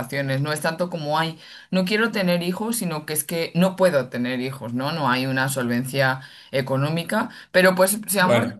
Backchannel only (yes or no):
yes